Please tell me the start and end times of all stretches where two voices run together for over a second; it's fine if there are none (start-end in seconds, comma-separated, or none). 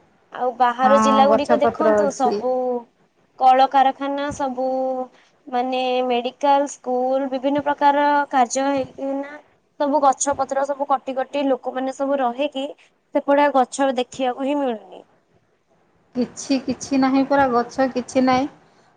0.8-2.4